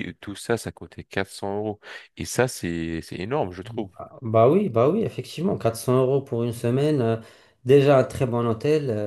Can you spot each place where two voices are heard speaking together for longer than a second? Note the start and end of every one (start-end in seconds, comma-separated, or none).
none